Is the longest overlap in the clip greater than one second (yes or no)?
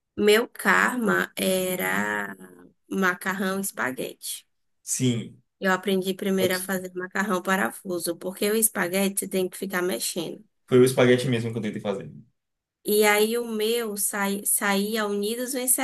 no